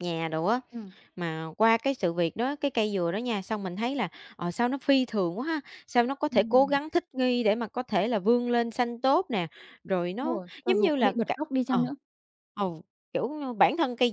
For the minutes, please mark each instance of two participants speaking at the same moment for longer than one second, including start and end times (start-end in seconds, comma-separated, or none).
10.1-11.9